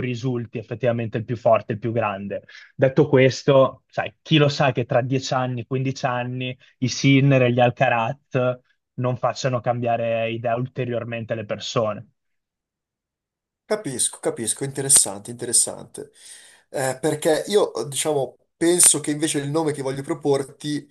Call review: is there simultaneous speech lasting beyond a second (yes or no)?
no